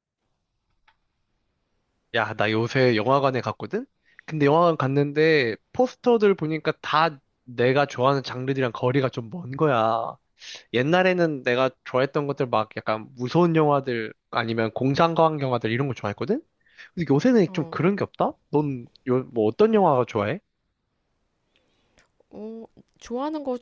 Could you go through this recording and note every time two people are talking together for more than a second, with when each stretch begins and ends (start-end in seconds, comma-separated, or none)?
none